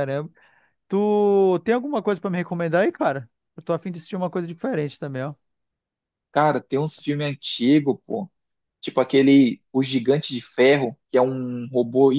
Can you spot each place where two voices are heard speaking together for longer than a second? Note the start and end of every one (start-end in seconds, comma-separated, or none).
none